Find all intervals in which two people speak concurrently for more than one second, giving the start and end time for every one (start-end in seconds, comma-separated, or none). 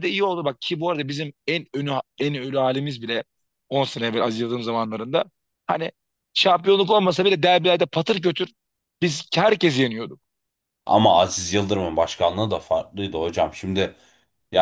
none